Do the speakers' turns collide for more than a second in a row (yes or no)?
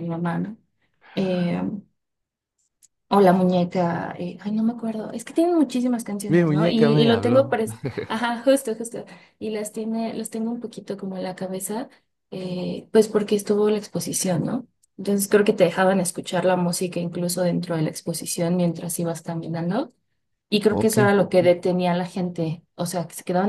yes